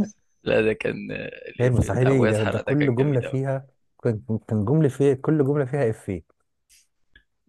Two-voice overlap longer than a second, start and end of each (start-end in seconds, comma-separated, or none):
1.6-3.4